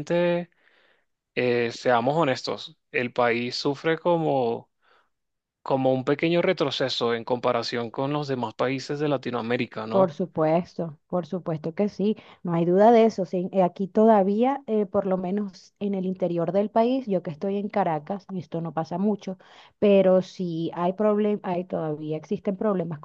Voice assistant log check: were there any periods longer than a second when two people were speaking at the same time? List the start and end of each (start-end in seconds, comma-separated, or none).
none